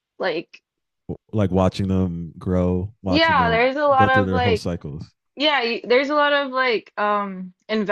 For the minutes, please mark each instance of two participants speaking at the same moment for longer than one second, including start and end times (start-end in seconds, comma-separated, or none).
3.1-4.6